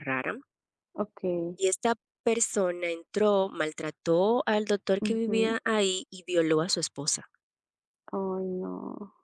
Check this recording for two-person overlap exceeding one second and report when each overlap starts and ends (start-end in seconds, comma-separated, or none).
none